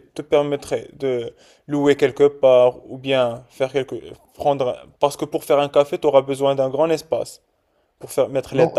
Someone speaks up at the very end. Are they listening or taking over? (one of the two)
taking over